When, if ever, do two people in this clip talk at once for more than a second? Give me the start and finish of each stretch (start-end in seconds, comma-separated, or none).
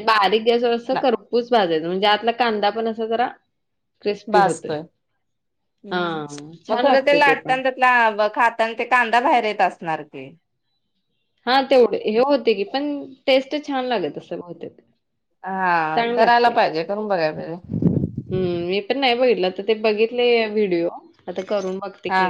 none